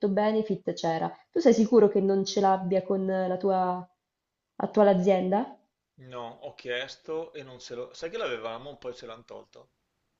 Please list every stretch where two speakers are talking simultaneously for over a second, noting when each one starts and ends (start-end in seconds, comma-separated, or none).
none